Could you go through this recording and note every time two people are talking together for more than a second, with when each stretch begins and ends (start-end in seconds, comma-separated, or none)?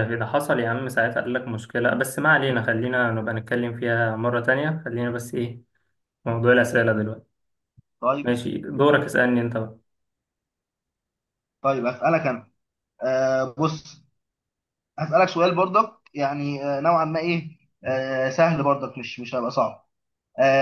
none